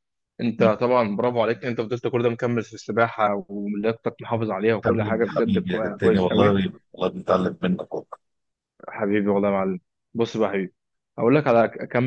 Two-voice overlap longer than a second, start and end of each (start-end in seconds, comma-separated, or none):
4.8-6.6